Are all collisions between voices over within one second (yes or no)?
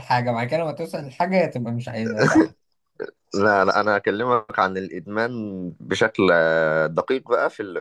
yes